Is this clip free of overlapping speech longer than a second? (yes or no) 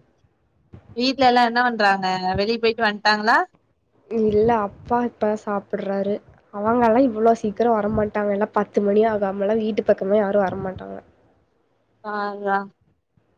yes